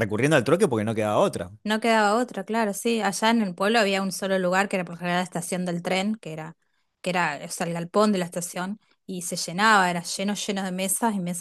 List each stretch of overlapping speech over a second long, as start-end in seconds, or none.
none